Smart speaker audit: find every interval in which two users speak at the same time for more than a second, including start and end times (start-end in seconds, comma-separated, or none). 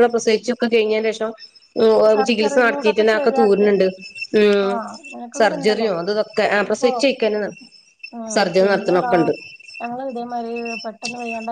2.1-3.7